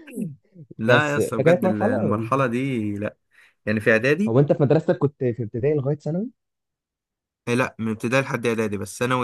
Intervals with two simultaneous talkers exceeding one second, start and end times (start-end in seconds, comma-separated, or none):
0.9-2.3